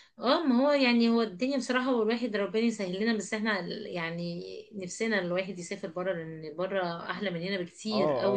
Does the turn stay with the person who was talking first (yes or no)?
no